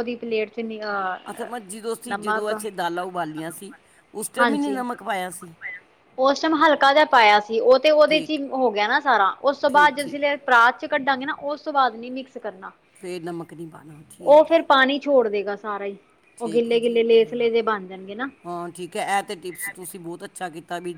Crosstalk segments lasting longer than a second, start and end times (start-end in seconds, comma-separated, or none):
none